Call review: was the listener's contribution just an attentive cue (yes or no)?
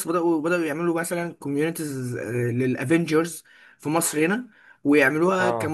yes